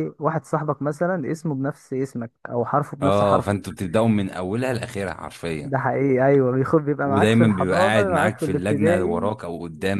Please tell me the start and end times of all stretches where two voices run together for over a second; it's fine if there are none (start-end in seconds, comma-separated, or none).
7.0-9.3